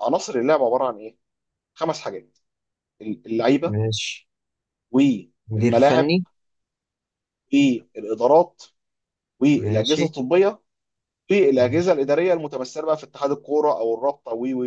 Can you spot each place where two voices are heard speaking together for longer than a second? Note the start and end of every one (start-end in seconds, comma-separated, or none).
none